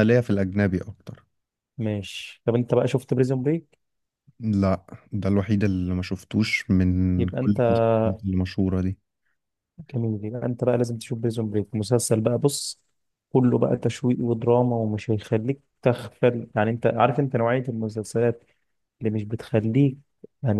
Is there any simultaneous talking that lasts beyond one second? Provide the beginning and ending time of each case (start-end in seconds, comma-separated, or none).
none